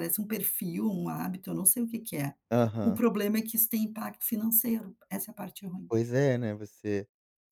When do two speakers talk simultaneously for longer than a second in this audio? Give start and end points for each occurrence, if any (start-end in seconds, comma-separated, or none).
none